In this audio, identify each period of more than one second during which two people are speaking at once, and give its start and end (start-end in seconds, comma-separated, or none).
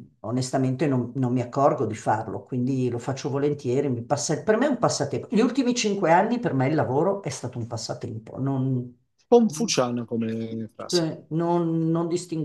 none